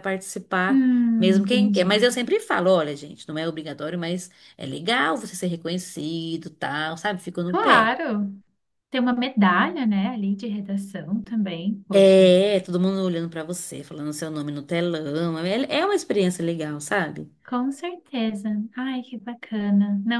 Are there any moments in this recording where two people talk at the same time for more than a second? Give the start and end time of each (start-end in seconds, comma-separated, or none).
0.7-2.1